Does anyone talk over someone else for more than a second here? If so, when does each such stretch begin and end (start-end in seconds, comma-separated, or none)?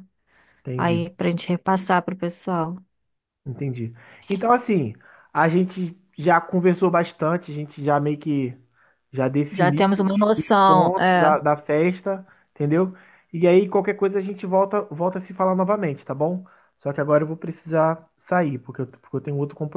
9.5-11.4